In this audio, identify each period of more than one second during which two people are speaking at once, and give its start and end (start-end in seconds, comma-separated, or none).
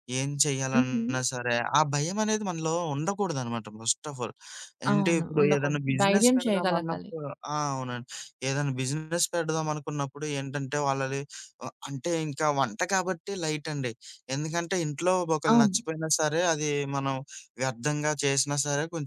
4.9-7.1